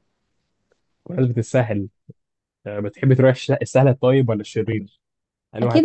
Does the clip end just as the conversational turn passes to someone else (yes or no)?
yes